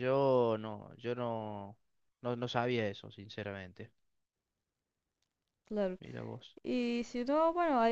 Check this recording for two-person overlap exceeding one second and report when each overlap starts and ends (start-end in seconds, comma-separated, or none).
none